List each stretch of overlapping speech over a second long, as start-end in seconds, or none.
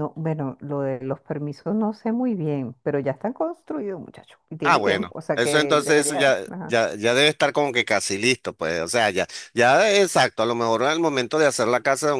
4.6-6.7